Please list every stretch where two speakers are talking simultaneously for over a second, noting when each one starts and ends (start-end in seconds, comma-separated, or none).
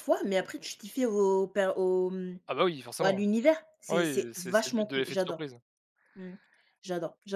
3.9-5.4